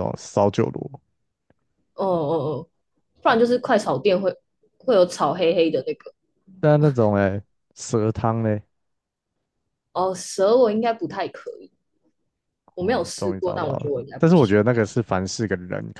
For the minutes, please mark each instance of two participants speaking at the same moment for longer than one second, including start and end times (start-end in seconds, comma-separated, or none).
12.8-14.6